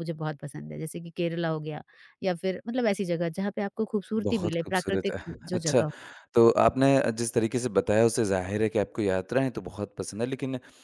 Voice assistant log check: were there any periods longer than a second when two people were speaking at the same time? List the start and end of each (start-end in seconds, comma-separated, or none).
4.2-5.8